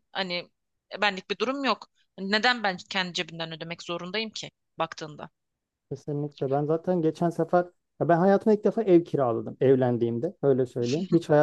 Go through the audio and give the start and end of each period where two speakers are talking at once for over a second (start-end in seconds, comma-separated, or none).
none